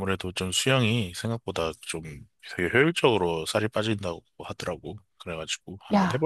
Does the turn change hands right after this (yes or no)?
yes